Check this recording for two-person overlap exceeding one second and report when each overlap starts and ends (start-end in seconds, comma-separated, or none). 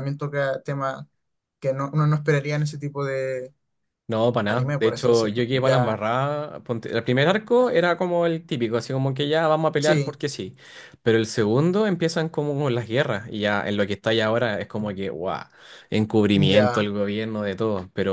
4.5-6.0